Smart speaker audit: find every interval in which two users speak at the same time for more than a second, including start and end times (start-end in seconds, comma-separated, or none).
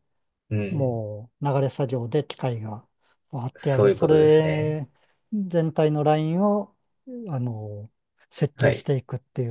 3.5-4.8